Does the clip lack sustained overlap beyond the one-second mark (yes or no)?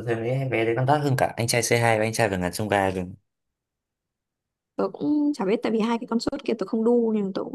yes